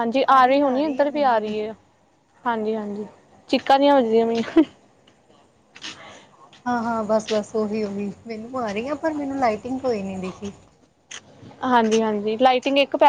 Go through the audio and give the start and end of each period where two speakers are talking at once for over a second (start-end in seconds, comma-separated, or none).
none